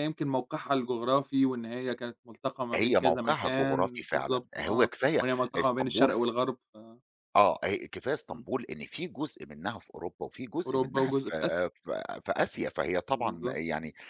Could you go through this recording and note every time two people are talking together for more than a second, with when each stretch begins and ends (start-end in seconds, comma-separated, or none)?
2.7-6.2